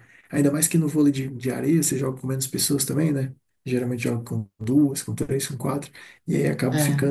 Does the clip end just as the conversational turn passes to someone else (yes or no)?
no